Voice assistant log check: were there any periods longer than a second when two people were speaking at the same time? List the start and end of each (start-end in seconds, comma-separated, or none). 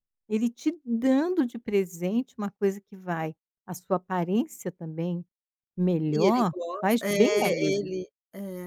6.1-7.9